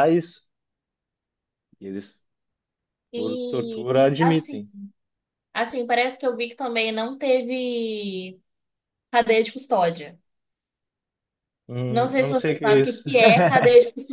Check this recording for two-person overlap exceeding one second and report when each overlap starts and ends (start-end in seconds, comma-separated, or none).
3.1-4.6, 11.9-13.1